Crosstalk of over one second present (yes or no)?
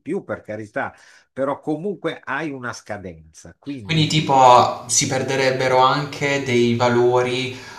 no